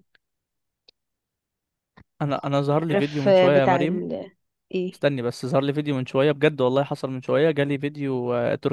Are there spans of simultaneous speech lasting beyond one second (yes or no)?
yes